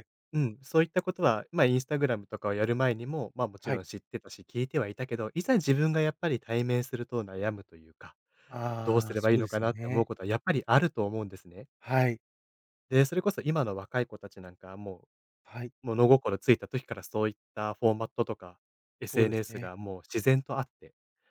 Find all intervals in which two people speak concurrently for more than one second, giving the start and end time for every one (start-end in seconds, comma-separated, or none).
8.8-10.1